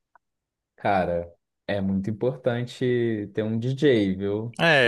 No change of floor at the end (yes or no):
no